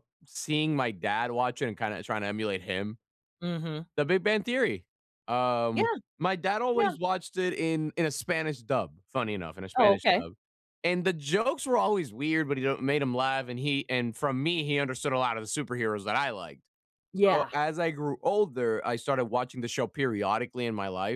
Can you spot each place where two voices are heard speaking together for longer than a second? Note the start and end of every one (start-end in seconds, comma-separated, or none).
none